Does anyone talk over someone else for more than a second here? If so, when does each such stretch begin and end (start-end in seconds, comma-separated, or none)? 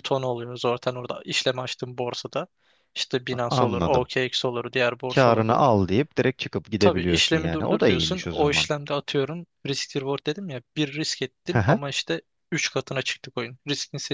6.8-8.7